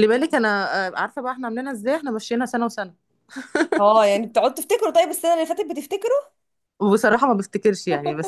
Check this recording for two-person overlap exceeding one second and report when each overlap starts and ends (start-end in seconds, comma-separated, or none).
none